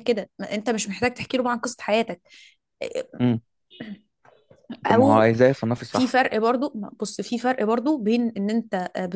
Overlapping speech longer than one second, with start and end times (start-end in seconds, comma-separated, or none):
none